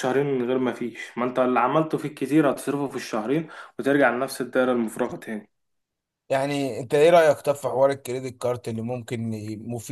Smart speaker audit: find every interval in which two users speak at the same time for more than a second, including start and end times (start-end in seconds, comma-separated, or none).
none